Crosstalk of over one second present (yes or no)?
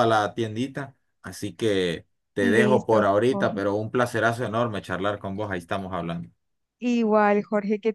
yes